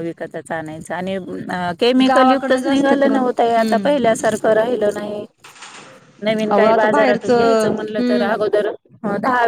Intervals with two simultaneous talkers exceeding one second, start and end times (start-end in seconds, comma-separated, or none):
2.1-3.9, 6.5-8.3